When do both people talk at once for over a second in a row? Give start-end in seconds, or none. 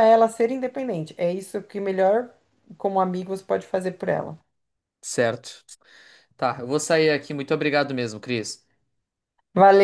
none